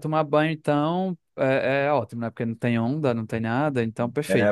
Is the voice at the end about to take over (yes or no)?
yes